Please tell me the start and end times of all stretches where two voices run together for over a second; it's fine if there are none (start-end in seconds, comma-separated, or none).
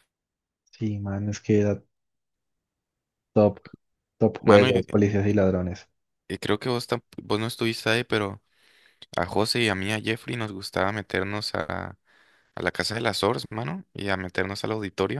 none